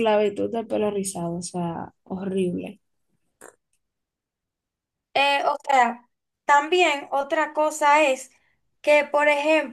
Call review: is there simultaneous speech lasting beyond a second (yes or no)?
no